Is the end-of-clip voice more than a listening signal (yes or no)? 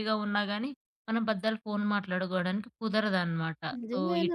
yes